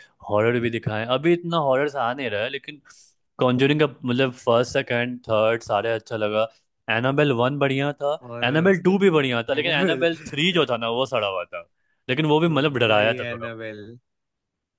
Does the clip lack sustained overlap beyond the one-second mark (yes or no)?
yes